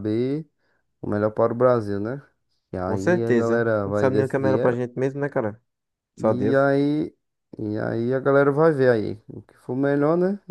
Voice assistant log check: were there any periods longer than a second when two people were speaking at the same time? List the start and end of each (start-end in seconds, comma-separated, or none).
2.8-4.9